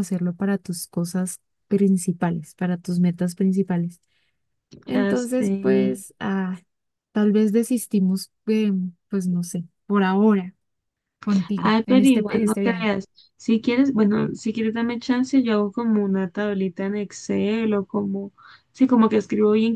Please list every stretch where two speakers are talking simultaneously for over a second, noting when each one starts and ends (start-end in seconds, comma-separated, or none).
11.6-12.9